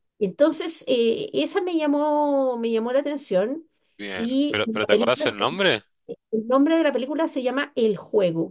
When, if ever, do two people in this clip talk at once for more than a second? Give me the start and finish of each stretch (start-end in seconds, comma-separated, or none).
4.2-5.6